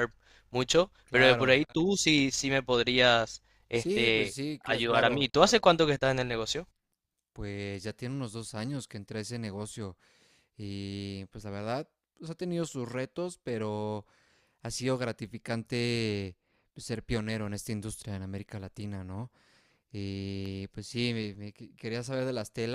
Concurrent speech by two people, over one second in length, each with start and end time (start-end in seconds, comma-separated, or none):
3.7-5.3